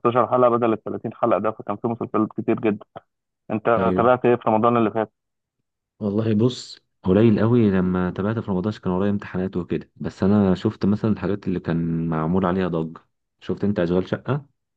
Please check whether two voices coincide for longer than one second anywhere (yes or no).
no